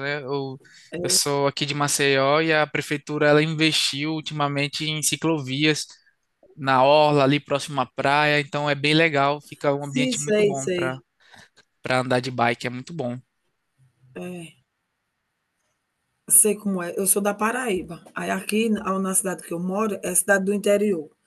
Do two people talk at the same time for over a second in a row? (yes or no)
yes